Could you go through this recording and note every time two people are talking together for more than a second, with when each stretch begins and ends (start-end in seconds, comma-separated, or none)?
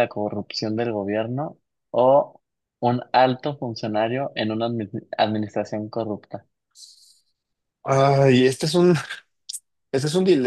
none